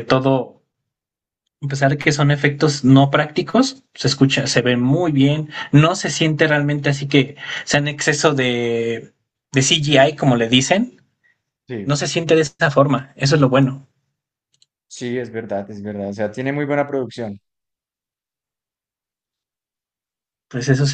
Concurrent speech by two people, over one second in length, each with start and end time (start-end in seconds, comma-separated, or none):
none